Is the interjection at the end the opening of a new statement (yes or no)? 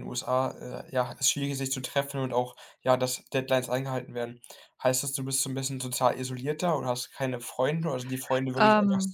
no